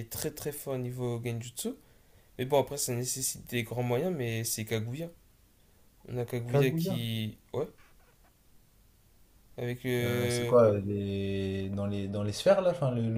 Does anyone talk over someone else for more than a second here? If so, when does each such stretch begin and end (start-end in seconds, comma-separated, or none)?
none